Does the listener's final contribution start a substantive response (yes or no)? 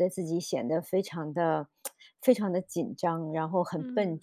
no